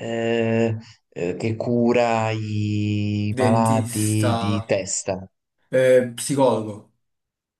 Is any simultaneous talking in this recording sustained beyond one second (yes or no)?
yes